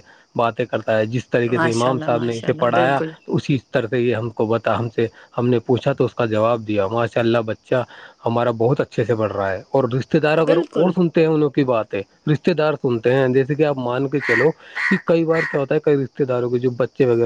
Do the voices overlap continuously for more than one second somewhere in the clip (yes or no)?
yes